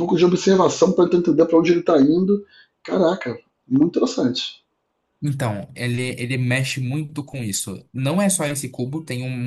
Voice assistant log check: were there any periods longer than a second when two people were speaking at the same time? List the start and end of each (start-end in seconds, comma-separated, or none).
none